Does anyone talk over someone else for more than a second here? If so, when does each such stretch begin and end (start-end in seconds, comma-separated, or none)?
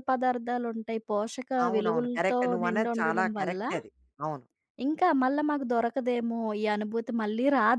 1.6-3.6